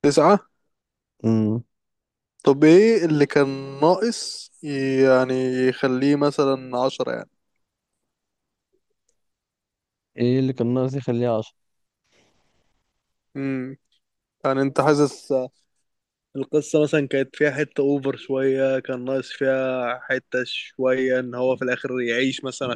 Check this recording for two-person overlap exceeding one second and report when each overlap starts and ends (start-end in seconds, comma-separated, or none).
none